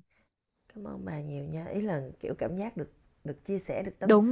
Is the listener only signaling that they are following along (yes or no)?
no